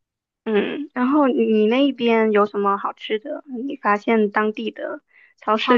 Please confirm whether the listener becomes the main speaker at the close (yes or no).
yes